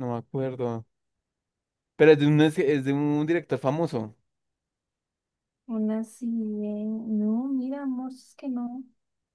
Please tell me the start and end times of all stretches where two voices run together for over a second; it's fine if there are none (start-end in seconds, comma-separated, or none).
none